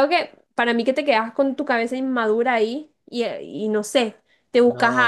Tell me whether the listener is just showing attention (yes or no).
yes